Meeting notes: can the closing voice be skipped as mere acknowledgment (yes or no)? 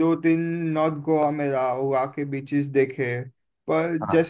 yes